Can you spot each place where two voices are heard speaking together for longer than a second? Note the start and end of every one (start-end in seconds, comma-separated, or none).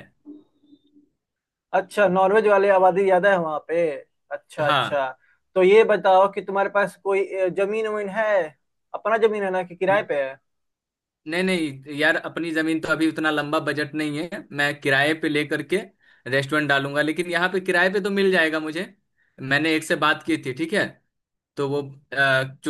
none